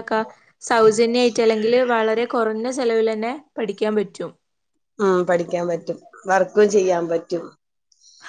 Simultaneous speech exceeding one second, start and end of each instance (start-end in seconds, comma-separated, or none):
none